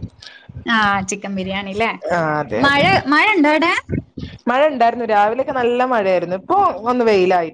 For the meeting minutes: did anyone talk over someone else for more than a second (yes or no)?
no